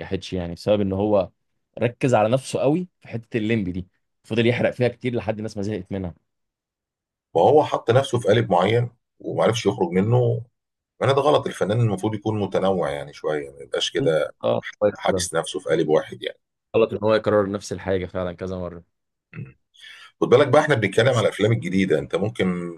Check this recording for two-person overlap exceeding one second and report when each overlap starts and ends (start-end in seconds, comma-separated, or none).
none